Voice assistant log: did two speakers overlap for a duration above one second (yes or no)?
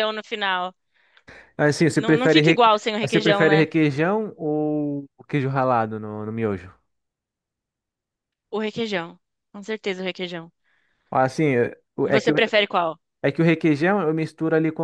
yes